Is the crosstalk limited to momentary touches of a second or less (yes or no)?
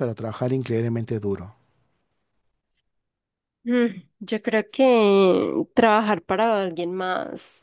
yes